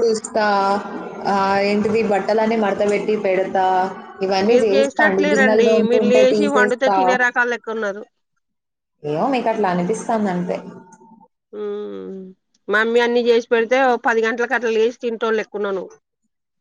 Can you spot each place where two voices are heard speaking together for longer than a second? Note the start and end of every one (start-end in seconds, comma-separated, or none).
4.5-7.0